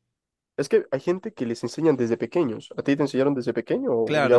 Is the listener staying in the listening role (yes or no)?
no